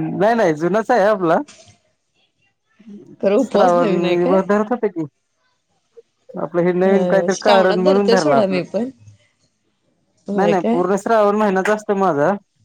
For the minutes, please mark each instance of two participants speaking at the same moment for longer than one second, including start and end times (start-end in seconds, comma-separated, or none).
6.9-8.6